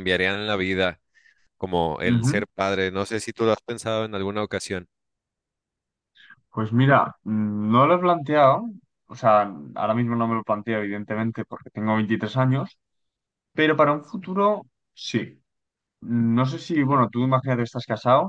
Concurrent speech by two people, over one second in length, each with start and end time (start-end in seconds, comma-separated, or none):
none